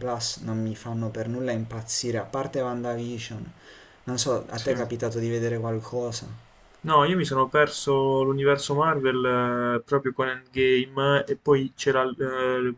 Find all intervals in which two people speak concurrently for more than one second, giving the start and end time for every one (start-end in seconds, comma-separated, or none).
none